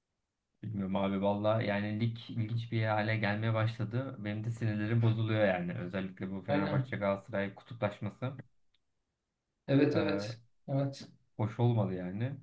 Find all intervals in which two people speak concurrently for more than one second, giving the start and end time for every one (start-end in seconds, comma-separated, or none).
none